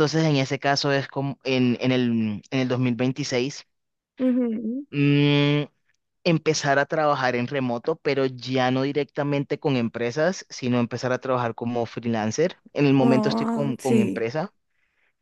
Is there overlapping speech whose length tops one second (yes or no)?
yes